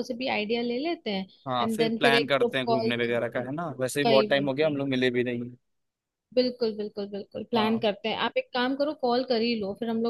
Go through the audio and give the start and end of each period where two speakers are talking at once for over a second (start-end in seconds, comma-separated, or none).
1.4-4.8